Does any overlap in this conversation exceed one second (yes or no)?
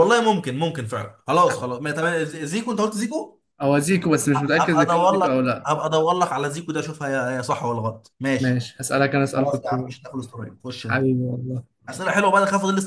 yes